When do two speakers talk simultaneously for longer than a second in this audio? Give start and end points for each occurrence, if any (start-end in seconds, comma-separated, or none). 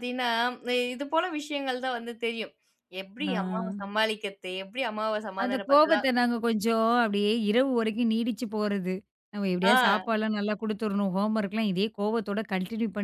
none